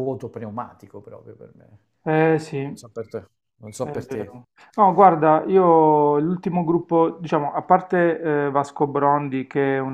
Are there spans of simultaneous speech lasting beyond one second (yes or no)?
no